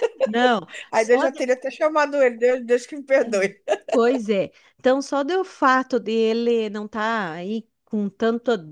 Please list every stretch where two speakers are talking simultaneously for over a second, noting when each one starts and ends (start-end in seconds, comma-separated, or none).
none